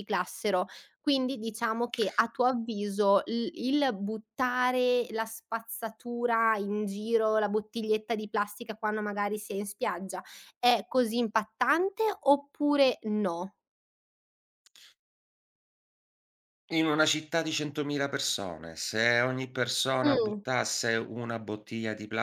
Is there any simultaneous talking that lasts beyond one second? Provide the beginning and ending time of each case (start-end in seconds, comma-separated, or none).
none